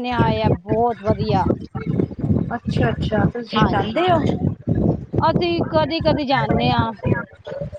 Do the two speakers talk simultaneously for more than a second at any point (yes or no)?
no